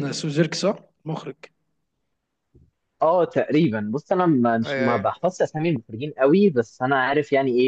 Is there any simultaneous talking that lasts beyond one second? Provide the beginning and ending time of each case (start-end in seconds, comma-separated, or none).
none